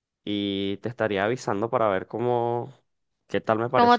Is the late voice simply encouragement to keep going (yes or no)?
no